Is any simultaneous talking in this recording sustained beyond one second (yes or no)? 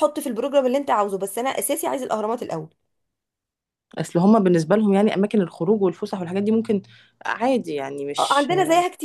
no